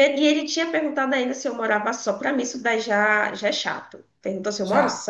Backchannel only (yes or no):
yes